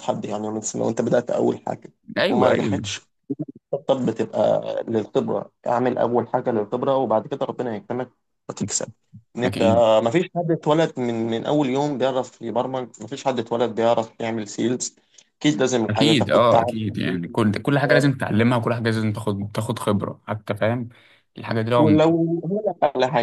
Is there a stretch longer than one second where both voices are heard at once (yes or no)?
yes